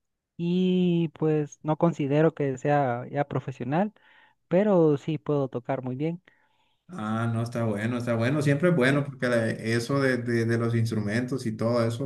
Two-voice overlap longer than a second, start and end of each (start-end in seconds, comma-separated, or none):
none